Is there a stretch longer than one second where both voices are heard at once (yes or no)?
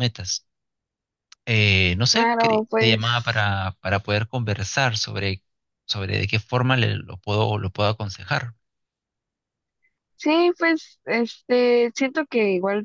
yes